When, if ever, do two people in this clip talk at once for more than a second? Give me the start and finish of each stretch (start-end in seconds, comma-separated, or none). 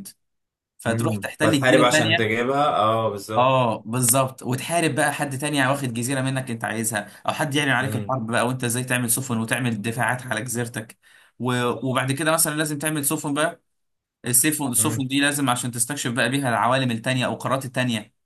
0.9-2.3